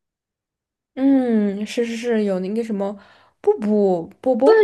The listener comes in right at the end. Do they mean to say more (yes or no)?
yes